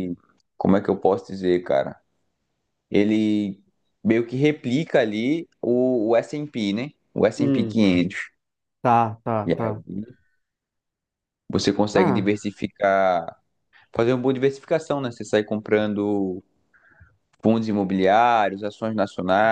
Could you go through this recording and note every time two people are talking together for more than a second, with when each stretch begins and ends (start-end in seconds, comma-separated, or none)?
none